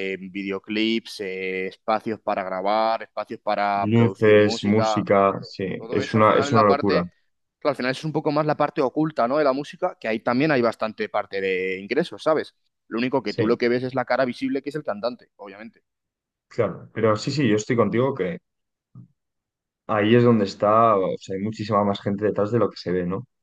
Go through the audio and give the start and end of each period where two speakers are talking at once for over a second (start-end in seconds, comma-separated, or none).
3.7-7.1